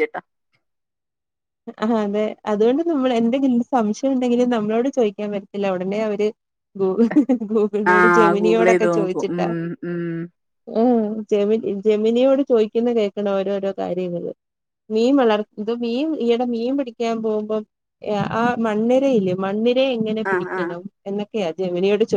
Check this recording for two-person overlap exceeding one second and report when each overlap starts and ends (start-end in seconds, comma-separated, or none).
7.9-9.4